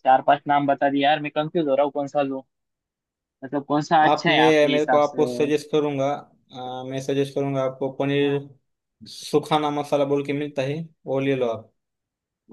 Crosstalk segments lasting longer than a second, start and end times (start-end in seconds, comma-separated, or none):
4.0-5.2